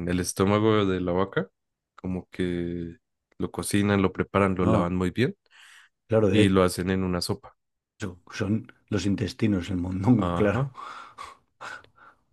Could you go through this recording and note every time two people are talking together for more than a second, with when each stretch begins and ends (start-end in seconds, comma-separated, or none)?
none